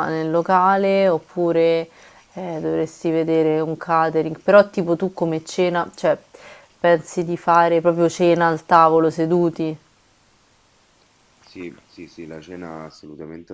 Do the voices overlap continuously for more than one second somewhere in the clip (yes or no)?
no